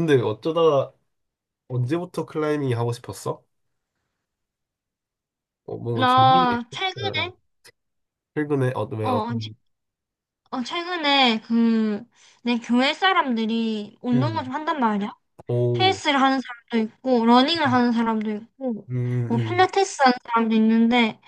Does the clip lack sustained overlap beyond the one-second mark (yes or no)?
no